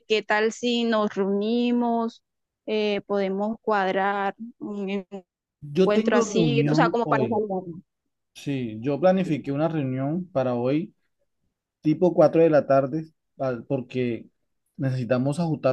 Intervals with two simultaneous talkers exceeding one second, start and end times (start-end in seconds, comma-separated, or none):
5.8-7.4